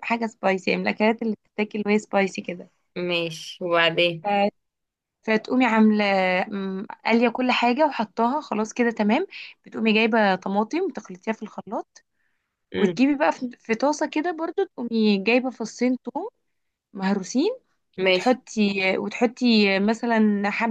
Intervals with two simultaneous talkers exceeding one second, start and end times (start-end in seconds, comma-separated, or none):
none